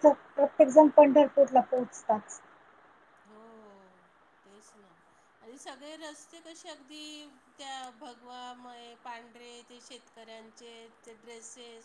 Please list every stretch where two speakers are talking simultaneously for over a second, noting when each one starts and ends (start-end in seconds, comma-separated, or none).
none